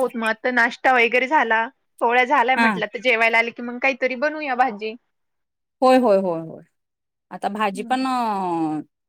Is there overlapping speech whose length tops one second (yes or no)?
no